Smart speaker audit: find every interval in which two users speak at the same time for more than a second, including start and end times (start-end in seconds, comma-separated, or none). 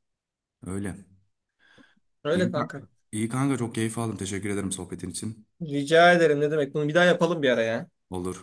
none